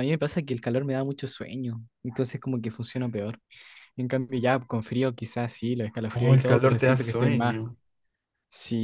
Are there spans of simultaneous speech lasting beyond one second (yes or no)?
yes